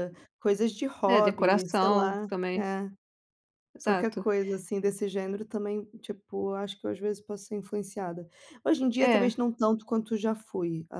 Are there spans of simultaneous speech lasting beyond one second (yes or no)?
yes